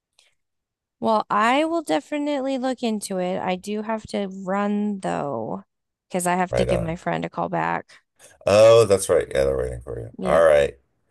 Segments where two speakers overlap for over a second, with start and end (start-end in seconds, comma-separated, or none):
none